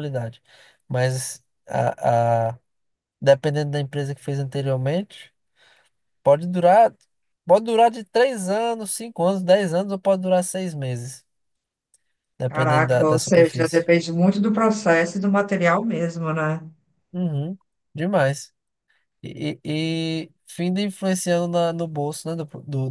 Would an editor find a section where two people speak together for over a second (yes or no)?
yes